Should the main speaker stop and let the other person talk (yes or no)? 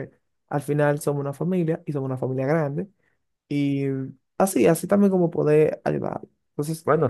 yes